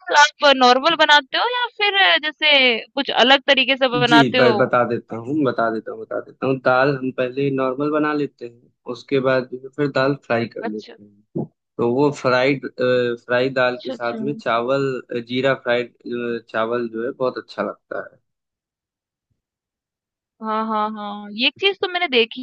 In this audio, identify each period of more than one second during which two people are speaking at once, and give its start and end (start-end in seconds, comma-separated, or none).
none